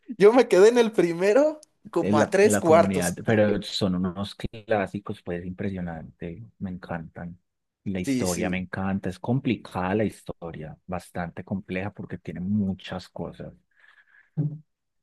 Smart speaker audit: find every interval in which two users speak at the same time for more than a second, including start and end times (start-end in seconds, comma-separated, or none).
2.0-3.2